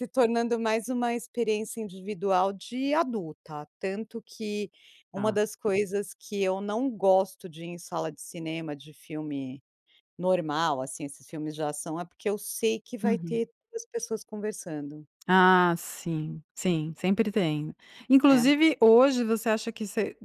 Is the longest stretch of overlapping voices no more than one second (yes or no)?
yes